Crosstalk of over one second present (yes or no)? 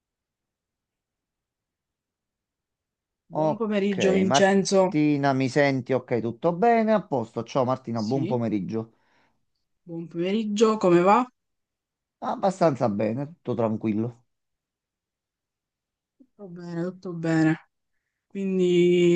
yes